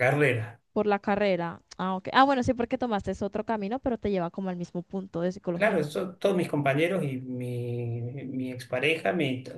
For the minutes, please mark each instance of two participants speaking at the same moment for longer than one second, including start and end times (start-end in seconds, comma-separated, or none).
none